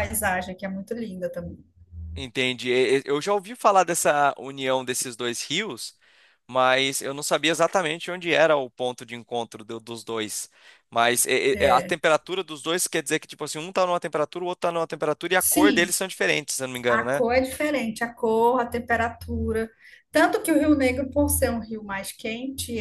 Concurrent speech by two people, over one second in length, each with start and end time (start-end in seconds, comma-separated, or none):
none